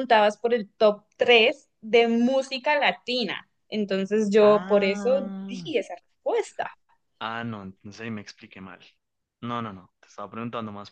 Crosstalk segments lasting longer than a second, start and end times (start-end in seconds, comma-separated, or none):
4.4-5.7